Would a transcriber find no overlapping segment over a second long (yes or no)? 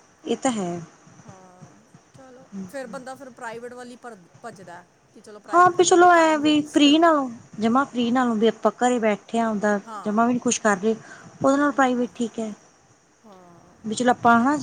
no